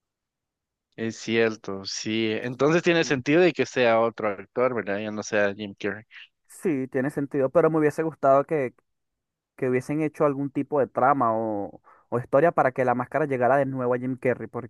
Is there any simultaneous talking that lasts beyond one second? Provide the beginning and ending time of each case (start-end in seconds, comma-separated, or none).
none